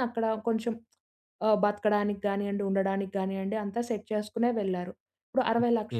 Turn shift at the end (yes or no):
no